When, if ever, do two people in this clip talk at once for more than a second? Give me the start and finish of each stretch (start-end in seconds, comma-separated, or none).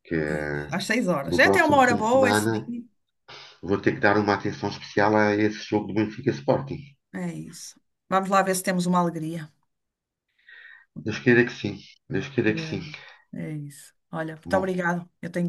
1.2-2.7